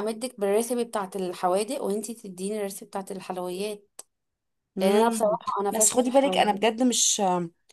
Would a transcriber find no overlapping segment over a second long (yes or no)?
no